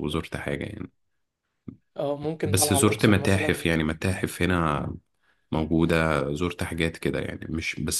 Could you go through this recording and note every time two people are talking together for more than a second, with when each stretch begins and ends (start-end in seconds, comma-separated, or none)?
2.4-3.7